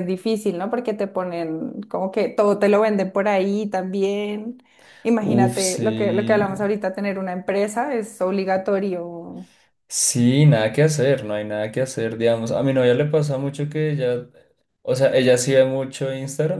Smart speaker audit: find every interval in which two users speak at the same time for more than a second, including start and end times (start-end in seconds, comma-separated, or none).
5.2-6.4